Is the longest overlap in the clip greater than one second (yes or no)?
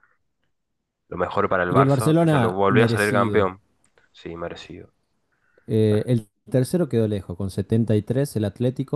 yes